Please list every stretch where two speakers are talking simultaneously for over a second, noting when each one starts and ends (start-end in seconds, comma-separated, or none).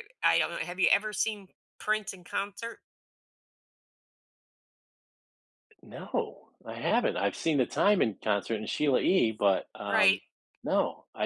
none